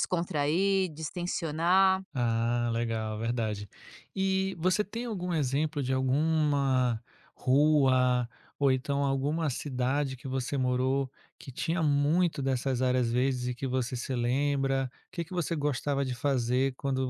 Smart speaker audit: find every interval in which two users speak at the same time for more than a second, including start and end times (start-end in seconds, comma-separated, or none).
none